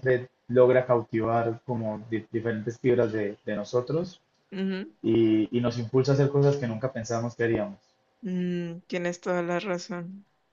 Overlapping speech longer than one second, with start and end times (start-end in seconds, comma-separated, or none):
none